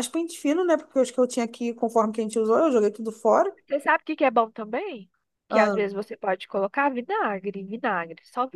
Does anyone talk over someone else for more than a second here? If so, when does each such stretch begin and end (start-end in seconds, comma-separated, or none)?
none